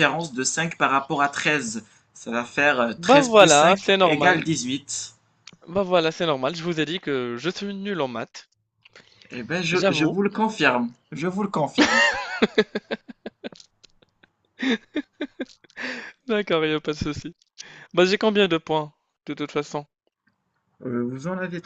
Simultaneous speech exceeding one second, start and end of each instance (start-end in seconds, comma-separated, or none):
2.9-4.4